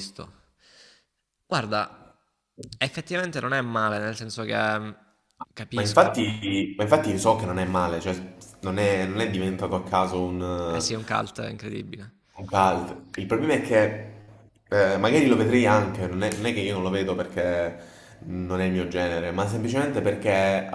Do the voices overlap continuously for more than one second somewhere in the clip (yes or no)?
no